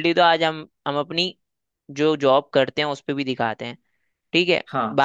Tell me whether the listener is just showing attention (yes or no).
yes